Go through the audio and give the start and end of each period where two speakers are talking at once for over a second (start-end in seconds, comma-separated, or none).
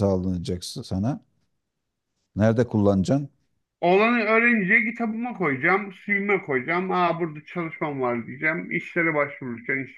none